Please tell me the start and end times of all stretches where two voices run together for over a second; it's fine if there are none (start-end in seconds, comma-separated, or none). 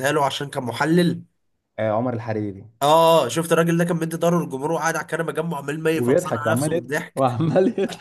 5.9-7.4